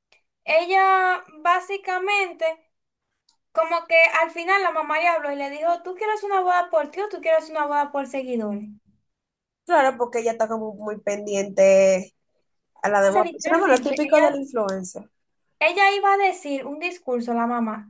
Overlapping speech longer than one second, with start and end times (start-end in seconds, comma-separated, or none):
13.1-14.3